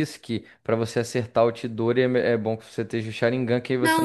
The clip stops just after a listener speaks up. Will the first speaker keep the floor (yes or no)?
no